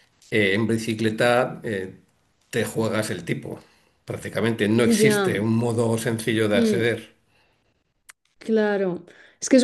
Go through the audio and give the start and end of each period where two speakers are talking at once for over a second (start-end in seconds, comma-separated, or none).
none